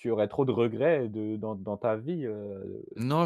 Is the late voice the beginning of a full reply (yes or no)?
yes